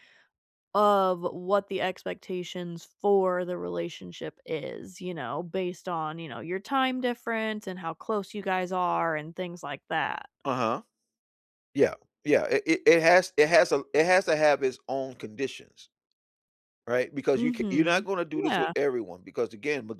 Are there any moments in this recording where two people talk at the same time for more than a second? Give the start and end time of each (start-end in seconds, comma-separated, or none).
17.3-18.7